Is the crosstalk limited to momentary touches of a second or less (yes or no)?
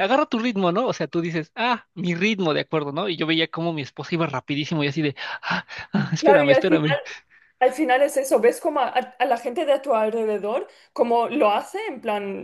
yes